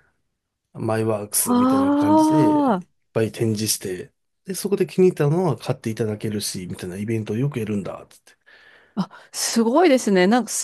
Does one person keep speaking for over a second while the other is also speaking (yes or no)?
yes